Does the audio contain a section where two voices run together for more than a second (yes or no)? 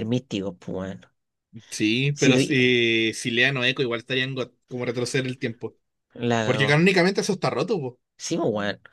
no